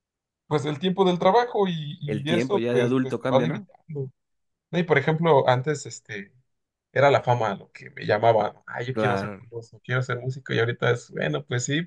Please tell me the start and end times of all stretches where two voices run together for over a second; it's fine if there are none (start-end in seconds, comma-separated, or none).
2.1-3.7